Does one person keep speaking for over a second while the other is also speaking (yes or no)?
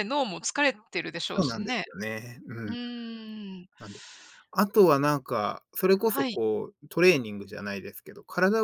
no